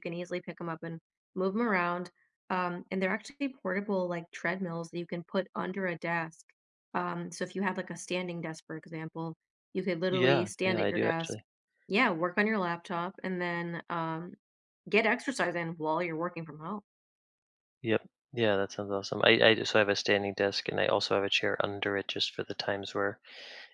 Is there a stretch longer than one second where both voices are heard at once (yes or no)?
yes